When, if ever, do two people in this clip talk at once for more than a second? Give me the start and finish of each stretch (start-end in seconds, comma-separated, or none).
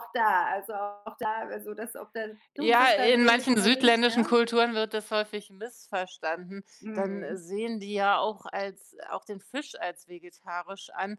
2.6-4.3